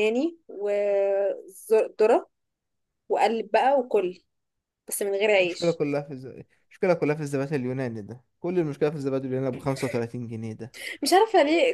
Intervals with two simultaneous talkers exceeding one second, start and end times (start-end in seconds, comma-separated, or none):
none